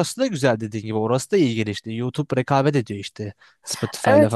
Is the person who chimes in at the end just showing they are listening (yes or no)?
no